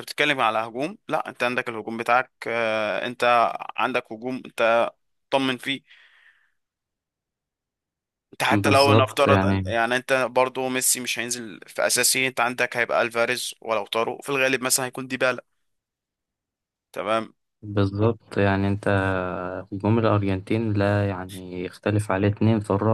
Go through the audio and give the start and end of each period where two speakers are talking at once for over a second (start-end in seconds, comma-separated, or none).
8.5-9.7